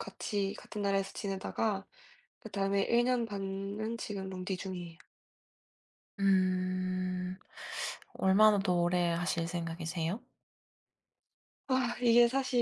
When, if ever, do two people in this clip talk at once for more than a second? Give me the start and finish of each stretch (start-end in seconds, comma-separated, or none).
none